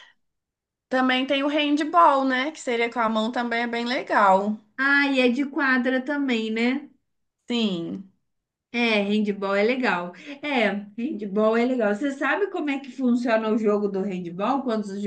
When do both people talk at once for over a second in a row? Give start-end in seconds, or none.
none